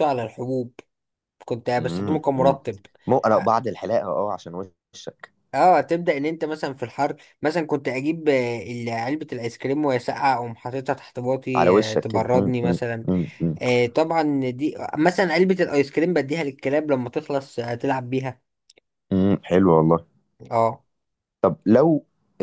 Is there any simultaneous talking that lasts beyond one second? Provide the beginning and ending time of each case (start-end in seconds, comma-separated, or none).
11.6-13.1